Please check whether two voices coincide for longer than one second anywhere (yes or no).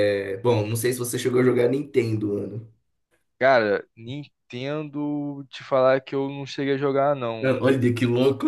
no